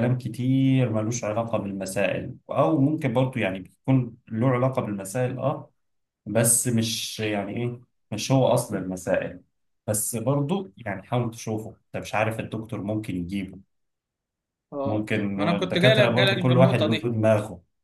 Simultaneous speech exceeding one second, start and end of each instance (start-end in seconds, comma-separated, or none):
14.8-17.1